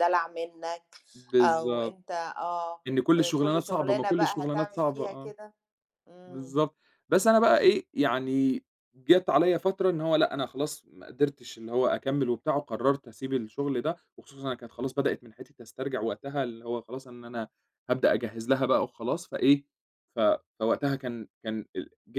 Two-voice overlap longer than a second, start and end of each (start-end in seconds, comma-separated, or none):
3.2-5.3